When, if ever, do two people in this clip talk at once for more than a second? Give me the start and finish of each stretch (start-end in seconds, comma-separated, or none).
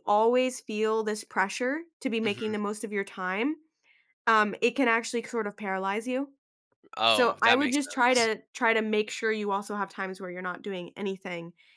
7.1-8.3